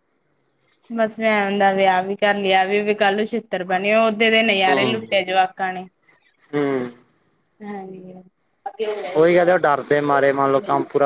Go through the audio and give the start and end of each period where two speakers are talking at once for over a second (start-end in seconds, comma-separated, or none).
none